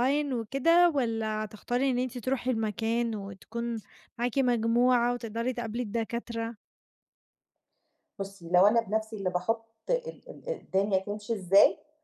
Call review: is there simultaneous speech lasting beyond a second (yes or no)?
no